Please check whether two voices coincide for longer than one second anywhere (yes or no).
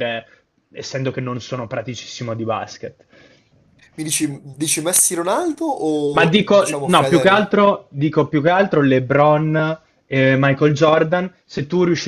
yes